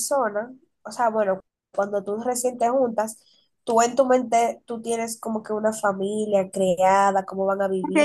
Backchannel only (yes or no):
no